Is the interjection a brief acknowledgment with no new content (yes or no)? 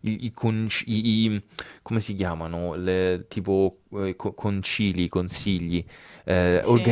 yes